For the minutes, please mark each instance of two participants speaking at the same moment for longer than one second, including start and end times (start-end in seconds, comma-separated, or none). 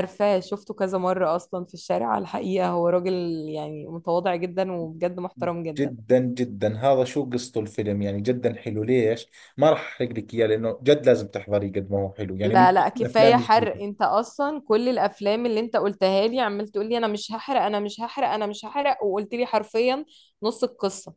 12.4-13.8